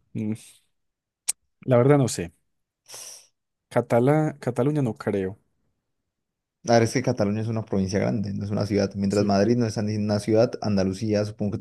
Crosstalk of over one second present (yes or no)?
no